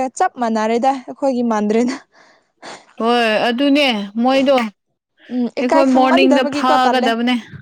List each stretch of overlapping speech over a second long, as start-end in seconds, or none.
5.3-7.1